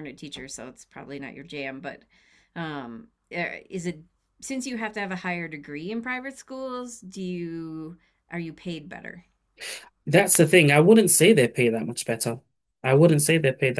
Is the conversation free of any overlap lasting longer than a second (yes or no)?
yes